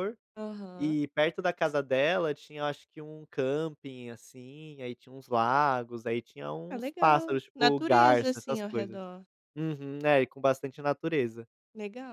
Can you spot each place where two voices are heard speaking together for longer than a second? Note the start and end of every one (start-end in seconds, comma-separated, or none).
6.7-9.0